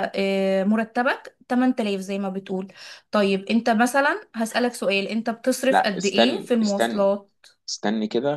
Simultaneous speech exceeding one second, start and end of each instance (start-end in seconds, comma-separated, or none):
5.7-7.1